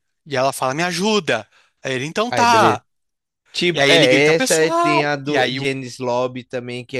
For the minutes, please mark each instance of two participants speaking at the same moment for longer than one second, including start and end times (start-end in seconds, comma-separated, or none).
3.7-5.7